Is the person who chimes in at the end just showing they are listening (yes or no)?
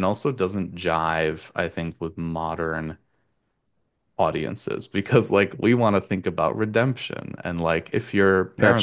yes